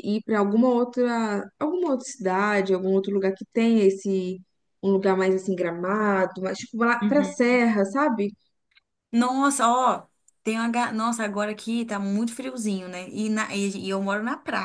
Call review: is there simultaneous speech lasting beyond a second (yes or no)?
no